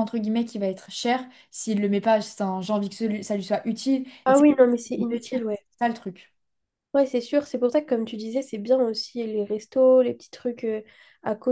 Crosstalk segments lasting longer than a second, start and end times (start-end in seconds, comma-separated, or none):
4.2-5.7